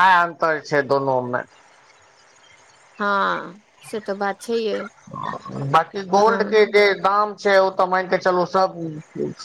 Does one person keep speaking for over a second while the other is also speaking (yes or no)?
no